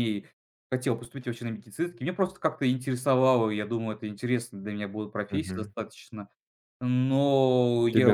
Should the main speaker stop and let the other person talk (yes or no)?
yes